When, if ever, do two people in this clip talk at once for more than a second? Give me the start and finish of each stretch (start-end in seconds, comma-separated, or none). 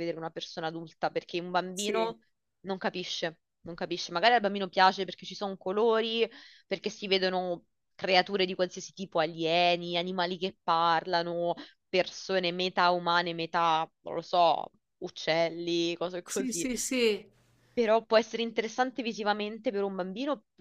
none